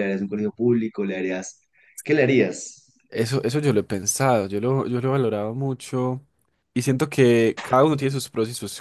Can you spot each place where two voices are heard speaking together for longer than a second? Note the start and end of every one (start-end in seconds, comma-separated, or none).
none